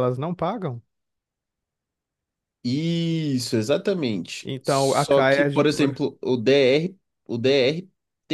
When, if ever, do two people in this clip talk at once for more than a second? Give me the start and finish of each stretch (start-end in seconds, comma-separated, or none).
4.4-6.0